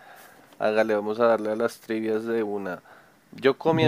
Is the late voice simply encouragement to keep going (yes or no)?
yes